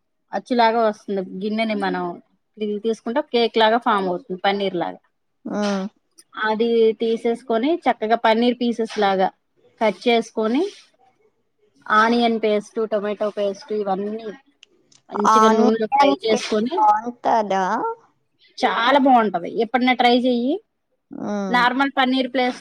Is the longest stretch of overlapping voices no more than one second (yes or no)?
no